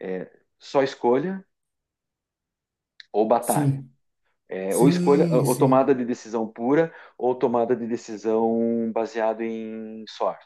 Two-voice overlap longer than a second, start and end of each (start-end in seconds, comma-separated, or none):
4.7-5.9